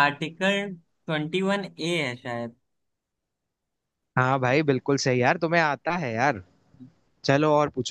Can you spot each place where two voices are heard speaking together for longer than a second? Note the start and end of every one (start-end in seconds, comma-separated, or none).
none